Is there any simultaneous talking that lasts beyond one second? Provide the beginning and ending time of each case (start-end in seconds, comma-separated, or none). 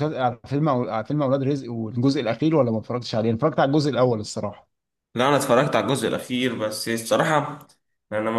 none